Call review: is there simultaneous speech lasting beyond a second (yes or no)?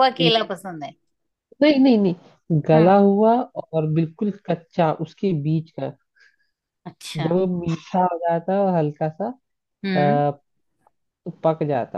no